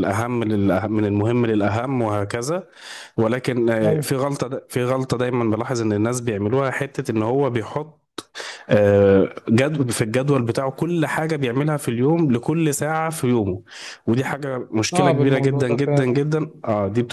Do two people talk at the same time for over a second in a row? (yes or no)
yes